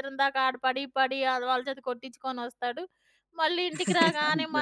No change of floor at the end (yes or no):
yes